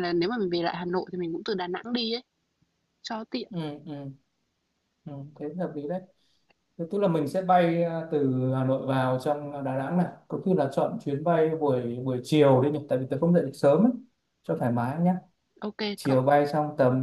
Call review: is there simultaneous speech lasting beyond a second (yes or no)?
no